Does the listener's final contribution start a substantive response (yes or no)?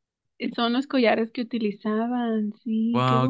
yes